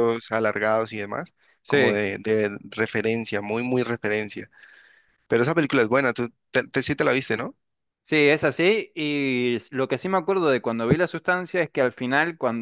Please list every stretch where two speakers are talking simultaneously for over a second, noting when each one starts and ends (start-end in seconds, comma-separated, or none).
none